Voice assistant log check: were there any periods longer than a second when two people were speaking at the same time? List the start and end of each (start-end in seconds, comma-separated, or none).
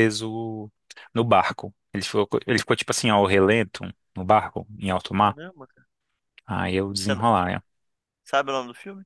none